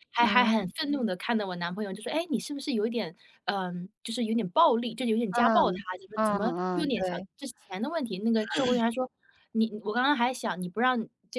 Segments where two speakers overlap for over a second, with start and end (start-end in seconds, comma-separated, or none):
5.3-7.3